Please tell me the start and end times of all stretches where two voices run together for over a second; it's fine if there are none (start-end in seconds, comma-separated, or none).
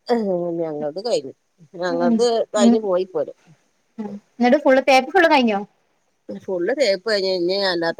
none